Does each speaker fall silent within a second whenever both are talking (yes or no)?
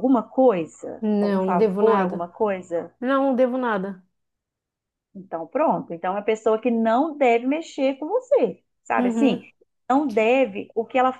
no